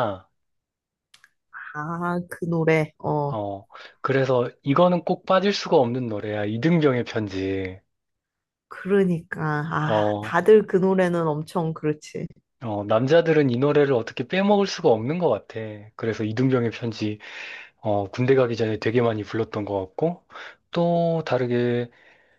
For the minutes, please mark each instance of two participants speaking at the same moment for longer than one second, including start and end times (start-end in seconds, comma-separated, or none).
none